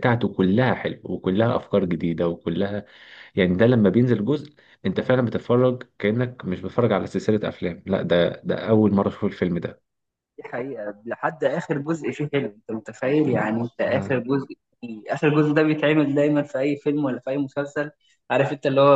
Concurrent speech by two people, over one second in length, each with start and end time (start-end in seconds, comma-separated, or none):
none